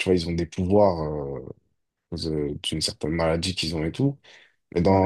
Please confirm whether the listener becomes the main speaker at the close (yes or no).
no